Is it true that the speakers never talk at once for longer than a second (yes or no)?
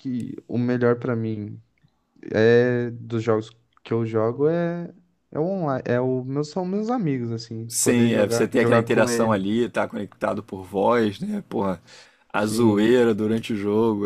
no